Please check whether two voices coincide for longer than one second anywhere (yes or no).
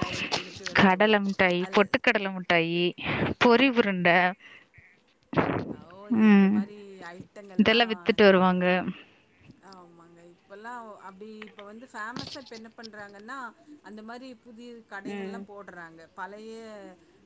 no